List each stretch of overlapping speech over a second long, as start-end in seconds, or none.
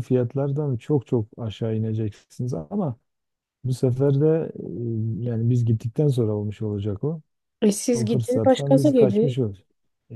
7.9-9.4